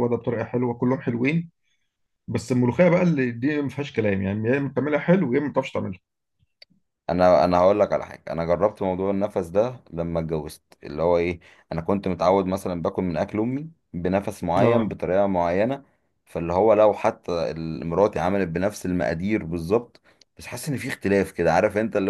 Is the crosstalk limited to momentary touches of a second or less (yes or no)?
yes